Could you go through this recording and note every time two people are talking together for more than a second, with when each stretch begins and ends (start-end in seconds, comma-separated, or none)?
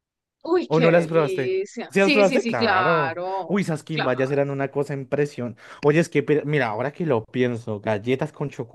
0.7-4.4